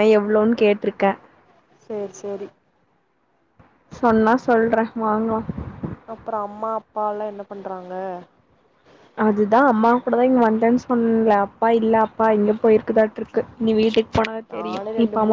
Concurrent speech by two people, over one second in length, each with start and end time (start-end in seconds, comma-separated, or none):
none